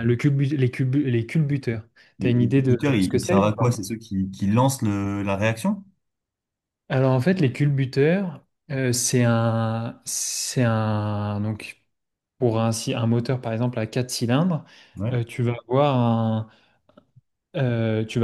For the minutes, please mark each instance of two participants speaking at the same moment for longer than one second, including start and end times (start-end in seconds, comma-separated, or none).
2.2-3.7